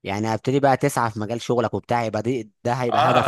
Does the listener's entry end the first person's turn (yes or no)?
yes